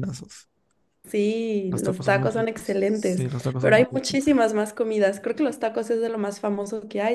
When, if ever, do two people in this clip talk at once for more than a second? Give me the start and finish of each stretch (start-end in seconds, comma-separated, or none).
1.7-4.2